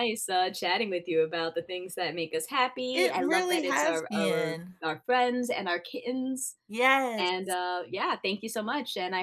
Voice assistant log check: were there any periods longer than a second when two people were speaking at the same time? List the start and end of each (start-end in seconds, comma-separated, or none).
2.9-4.8